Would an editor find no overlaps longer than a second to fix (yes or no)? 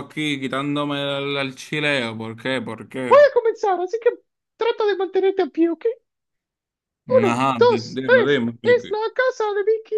no